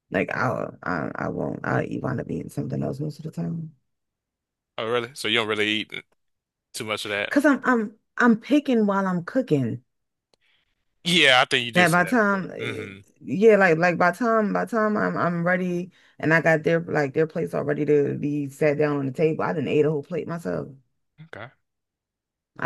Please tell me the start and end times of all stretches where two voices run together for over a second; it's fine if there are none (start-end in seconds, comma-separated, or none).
11.7-13.0